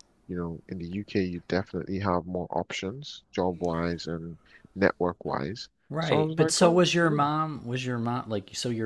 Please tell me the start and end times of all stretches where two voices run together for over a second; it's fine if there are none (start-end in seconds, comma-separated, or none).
5.9-7.2